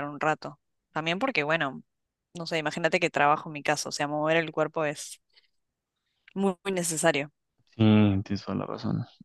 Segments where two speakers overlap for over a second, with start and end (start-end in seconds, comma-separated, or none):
none